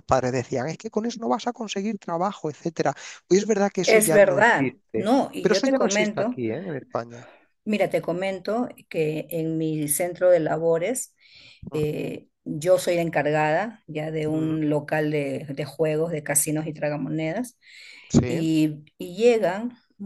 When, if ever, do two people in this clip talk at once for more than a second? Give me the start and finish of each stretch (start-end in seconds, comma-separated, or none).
3.7-6.4